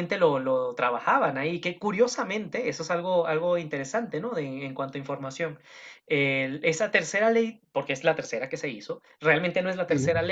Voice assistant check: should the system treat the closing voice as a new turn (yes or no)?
no